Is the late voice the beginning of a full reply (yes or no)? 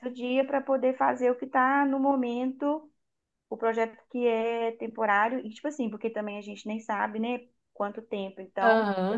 yes